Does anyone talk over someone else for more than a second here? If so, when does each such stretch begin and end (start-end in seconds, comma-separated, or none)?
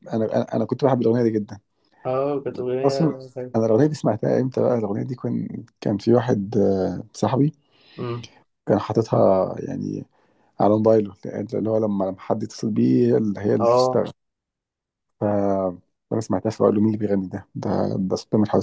none